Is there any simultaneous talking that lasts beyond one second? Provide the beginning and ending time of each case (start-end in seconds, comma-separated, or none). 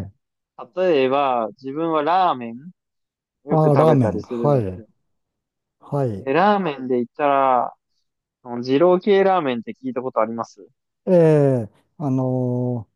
3.5-4.8